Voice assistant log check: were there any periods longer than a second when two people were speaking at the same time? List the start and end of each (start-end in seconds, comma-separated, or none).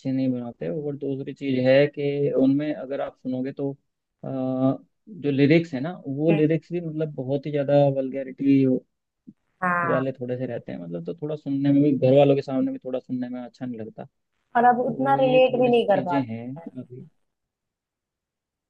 14.7-16.7